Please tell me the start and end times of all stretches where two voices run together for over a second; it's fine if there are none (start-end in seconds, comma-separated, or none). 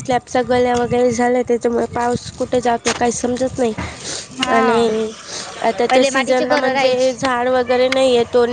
5.9-7.2